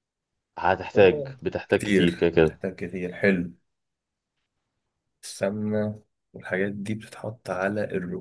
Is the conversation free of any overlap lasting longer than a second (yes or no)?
no